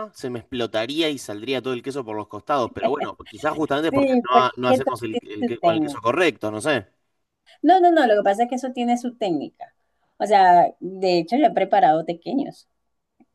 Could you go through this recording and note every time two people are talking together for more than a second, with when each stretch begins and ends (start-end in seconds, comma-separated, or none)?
3.9-6.1